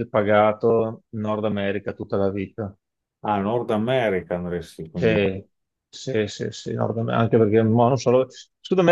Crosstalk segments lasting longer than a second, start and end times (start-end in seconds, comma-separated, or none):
none